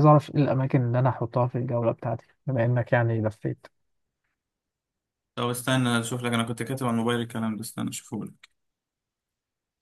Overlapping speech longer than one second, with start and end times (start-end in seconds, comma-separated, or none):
none